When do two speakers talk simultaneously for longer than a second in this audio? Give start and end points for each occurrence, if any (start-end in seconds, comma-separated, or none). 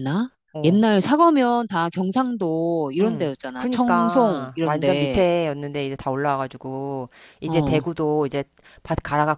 3.0-5.2